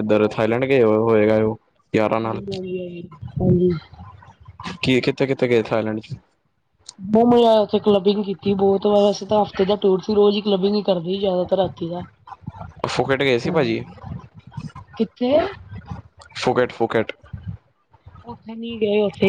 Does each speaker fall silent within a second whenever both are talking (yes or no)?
yes